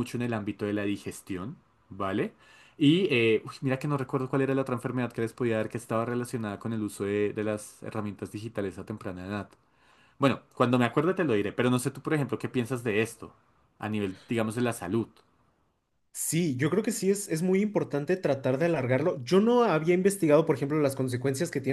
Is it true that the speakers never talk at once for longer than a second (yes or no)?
yes